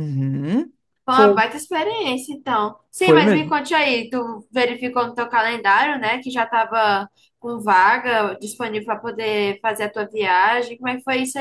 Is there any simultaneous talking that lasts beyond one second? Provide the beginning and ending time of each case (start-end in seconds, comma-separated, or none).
none